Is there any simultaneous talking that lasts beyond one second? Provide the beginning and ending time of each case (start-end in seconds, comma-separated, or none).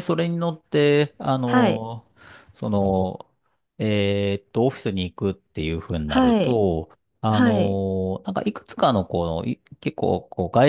none